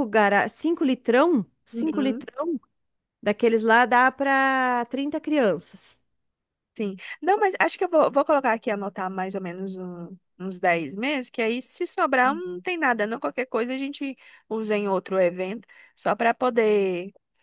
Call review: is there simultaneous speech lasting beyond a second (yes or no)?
no